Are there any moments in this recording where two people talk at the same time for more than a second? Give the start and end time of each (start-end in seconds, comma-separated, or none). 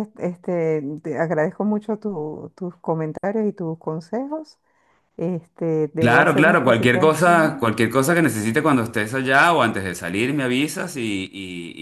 6.0-7.7